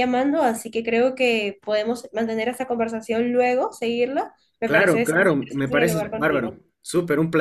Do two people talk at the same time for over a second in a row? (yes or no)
yes